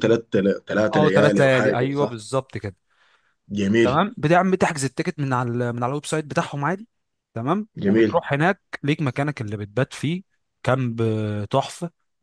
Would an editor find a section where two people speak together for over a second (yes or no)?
yes